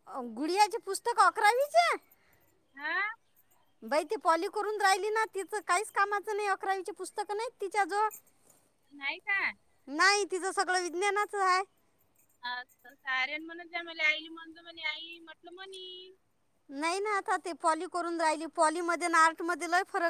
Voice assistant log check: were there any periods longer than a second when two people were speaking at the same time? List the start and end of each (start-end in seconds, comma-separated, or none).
none